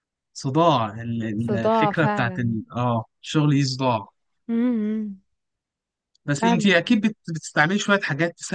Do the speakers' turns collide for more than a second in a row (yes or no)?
yes